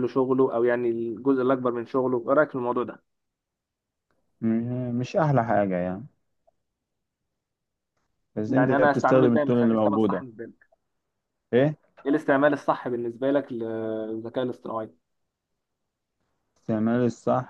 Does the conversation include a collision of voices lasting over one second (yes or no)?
yes